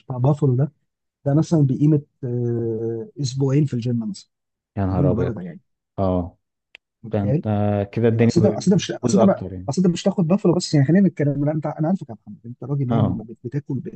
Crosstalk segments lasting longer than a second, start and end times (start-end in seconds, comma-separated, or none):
8.1-9.7